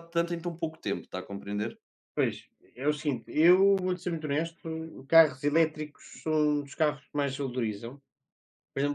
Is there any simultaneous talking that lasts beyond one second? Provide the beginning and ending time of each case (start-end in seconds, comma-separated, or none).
none